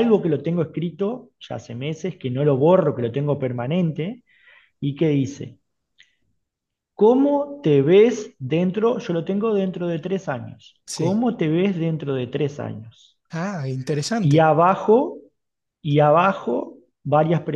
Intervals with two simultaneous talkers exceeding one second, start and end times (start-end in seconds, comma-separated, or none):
none